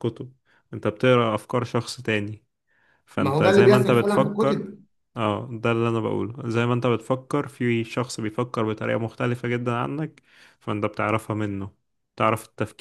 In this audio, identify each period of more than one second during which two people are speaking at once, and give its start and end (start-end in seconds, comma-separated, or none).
3.1-4.7